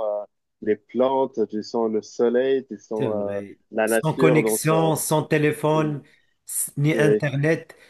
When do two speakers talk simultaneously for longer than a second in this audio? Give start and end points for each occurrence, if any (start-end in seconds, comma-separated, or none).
2.9-4.9